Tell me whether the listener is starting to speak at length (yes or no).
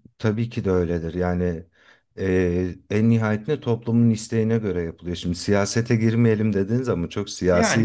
yes